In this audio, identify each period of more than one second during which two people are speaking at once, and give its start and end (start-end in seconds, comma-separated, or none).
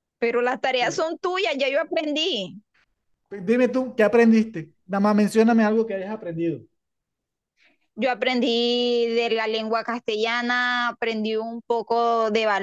none